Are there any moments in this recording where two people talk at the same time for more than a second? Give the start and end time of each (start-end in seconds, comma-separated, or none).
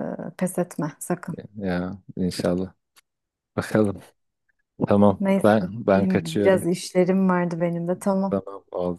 5.2-6.7